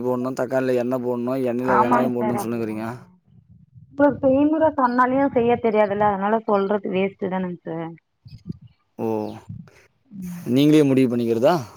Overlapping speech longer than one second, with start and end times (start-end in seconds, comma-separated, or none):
none